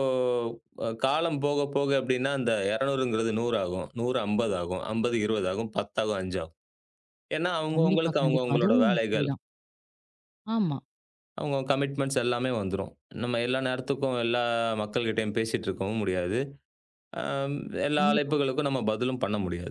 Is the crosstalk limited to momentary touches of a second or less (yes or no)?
no